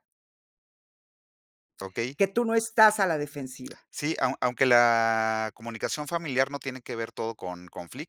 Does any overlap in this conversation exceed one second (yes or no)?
no